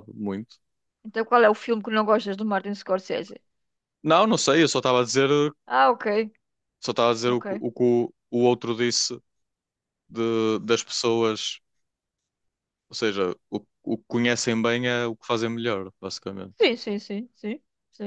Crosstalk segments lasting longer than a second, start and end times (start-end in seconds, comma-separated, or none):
none